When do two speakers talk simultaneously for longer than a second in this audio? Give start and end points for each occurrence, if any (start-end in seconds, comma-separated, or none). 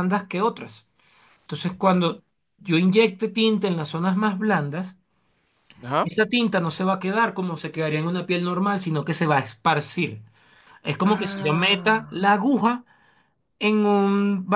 11.0-12.3